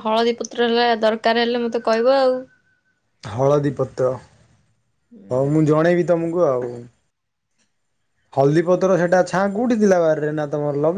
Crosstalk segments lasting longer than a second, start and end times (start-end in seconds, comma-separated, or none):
none